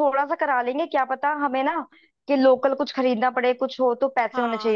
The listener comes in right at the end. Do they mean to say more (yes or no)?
yes